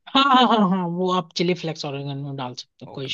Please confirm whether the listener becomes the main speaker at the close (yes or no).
yes